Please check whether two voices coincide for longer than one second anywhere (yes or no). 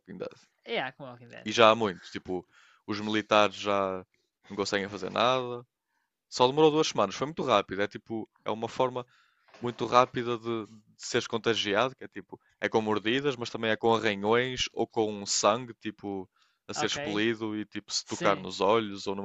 no